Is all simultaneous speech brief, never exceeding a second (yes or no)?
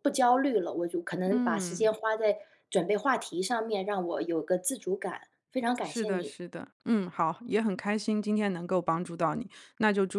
yes